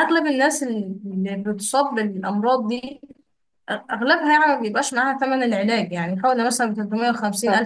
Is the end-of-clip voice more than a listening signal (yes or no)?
no